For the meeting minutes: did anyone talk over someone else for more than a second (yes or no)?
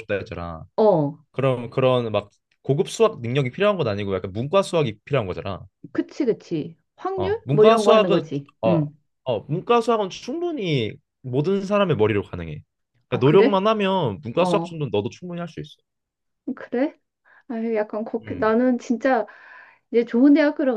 yes